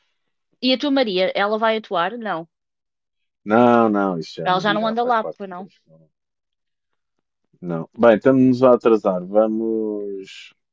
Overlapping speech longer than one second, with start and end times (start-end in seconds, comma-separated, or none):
4.4-5.7